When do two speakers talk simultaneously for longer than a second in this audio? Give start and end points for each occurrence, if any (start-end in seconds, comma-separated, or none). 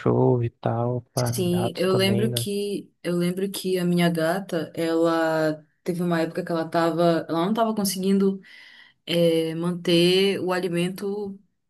1.1-2.5